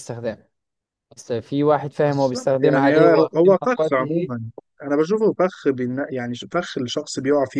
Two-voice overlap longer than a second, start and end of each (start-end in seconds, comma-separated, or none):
2.0-4.4